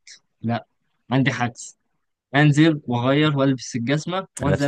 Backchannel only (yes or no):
no